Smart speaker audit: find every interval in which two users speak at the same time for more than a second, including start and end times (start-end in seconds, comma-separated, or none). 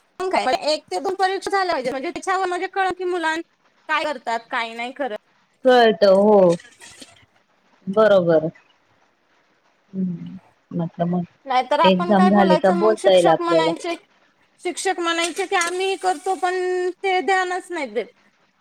11.5-13.7